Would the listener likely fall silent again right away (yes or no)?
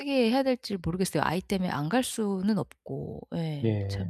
no